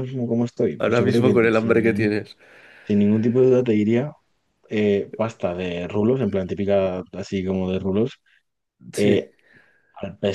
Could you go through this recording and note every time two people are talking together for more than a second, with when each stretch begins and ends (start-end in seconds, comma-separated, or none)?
0.8-2.1